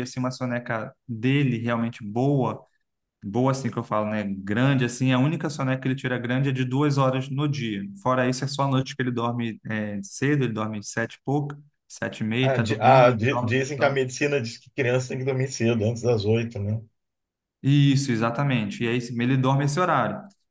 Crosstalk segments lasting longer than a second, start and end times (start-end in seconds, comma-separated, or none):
12.4-14.0